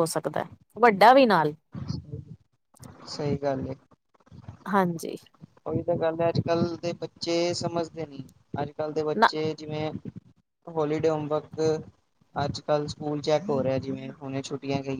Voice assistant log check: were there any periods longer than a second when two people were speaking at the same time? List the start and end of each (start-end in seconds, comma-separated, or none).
none